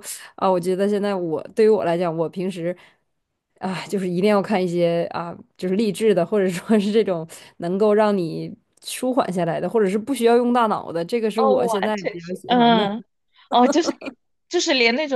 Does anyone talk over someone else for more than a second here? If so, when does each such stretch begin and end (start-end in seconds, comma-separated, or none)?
11.4-12.9